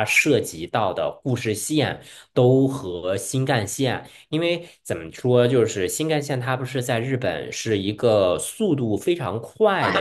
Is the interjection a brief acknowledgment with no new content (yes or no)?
yes